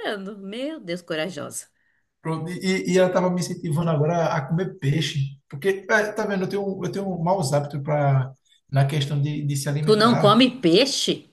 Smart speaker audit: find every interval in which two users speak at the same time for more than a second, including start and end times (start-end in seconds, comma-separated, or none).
none